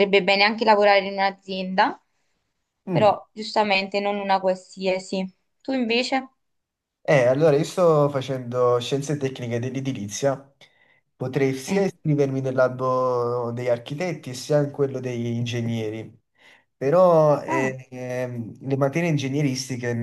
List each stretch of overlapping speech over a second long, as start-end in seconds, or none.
none